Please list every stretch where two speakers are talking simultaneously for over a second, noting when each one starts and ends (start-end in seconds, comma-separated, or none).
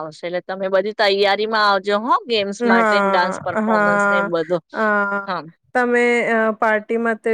2.7-4.3